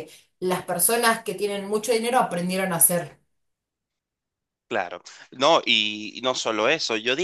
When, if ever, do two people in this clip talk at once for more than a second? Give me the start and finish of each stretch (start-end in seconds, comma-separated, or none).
none